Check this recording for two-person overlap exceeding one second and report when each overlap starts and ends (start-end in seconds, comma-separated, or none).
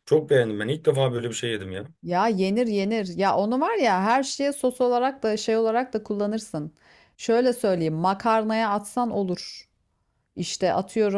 none